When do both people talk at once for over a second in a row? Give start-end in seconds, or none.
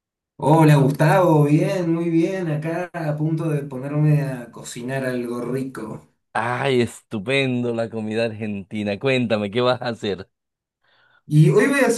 none